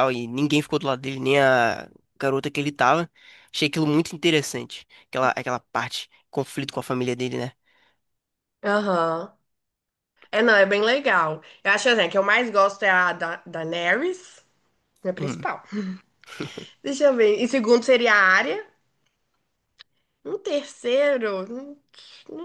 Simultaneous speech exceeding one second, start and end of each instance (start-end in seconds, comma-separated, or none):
none